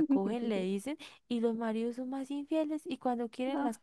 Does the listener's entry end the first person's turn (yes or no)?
no